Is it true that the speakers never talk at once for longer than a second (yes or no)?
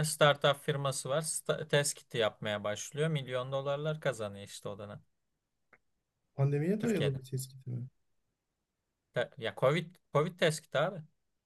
yes